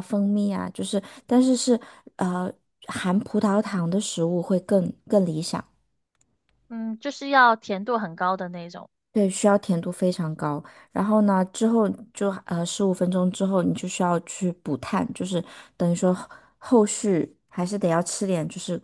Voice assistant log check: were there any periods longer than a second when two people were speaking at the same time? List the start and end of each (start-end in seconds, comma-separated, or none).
none